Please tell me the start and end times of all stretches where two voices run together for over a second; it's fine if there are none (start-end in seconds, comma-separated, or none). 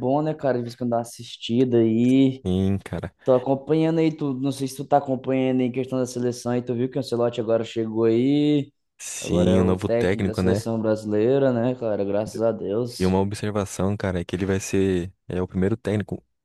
9.2-10.6